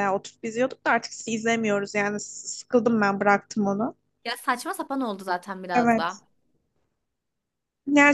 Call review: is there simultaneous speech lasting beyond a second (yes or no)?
no